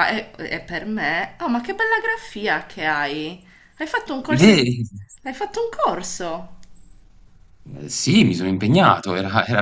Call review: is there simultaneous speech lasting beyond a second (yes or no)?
no